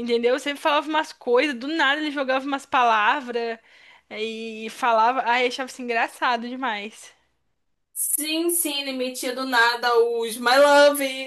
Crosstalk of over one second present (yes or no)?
no